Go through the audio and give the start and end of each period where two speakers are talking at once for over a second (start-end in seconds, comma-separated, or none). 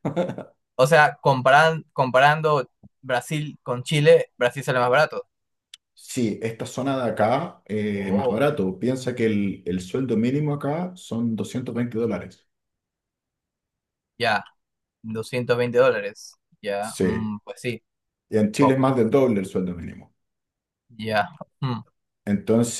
none